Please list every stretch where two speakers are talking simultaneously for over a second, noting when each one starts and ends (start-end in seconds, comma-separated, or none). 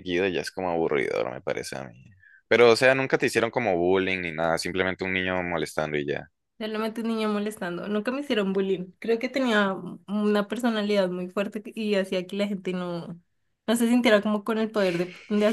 none